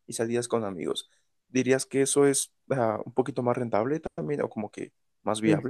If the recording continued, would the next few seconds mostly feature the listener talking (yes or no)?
yes